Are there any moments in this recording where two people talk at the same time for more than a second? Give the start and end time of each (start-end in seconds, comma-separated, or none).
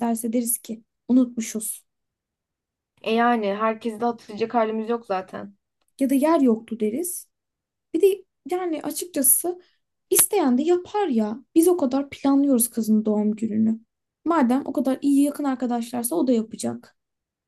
none